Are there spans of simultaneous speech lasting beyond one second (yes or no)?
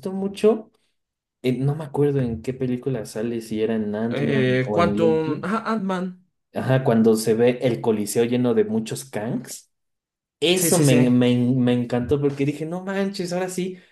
yes